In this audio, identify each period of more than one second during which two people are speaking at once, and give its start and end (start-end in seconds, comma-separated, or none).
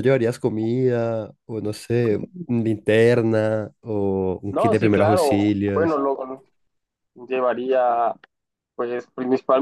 4.5-6.0